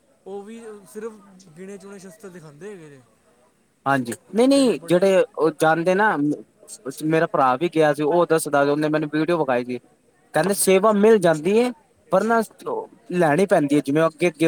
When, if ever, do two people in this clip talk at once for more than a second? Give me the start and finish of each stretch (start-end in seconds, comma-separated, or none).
none